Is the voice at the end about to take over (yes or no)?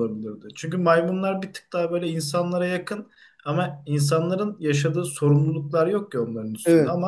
no